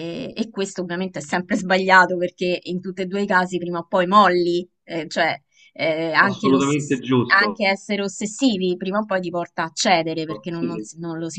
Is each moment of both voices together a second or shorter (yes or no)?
no